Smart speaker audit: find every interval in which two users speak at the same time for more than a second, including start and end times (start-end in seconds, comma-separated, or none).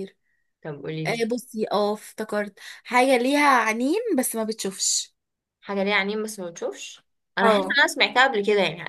none